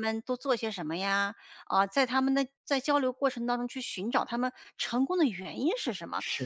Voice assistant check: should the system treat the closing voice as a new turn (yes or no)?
no